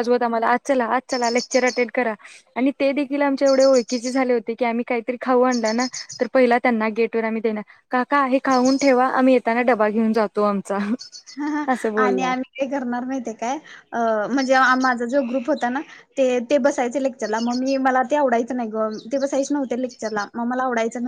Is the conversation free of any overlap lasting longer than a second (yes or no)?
yes